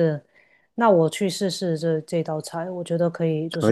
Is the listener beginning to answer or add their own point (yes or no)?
yes